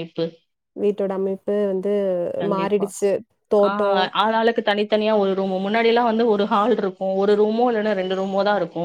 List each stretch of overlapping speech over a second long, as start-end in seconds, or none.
none